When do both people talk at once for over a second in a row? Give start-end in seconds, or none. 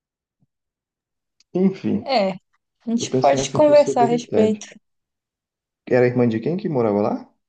3.0-4.7